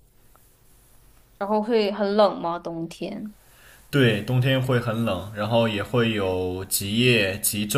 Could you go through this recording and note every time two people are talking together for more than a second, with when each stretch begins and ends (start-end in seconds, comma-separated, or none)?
none